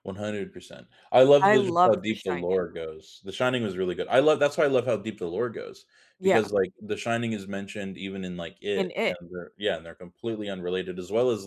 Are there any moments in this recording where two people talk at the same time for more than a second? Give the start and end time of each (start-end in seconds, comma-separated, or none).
1.4-2.6